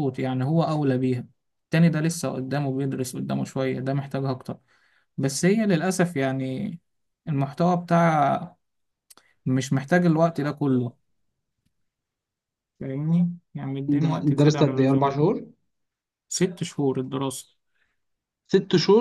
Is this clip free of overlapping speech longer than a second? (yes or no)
no